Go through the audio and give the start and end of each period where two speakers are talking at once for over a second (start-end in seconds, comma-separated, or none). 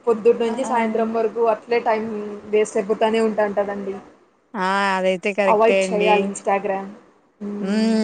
none